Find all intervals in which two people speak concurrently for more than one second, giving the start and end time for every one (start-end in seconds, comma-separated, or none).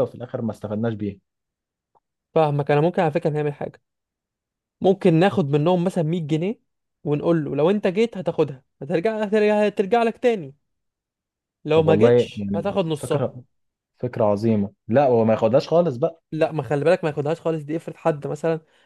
11.8-13.3